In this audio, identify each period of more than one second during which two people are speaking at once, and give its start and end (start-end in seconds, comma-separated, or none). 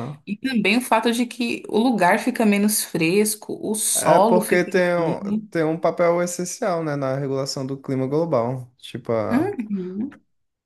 3.9-5.5